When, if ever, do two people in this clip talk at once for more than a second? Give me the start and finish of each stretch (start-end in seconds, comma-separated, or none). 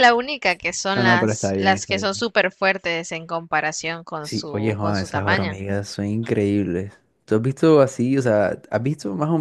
0.9-2.3, 4.2-5.6